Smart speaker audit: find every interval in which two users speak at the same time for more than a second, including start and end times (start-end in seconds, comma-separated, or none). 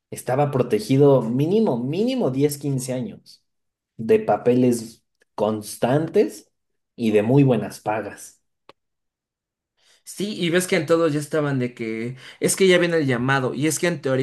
none